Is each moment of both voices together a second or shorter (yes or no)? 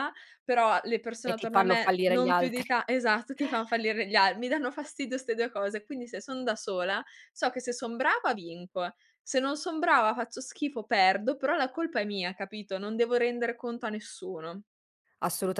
no